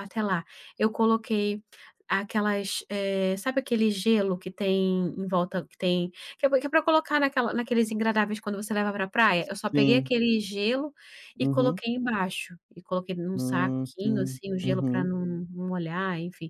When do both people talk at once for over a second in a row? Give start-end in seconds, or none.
13.3-15.1